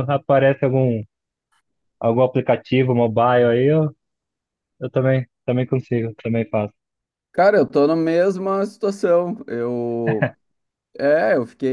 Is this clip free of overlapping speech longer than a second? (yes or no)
yes